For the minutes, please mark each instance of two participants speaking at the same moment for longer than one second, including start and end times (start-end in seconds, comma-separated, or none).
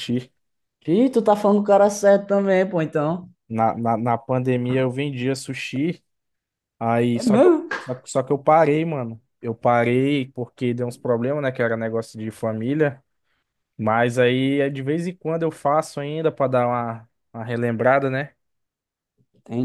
none